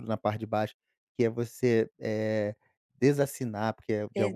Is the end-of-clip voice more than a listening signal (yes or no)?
no